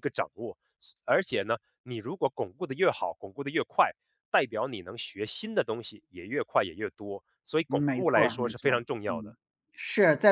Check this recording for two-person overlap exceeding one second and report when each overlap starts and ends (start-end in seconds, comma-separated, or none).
7.7-9.3